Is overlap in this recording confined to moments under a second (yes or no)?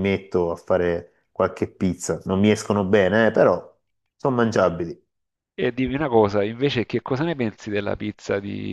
yes